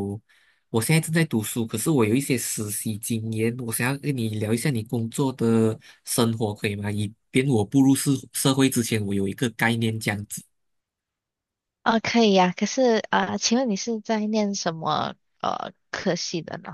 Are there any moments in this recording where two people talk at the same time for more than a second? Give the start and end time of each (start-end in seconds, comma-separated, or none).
none